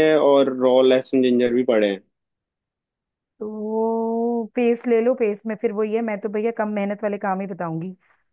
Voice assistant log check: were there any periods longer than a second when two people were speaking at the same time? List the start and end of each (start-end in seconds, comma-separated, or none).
none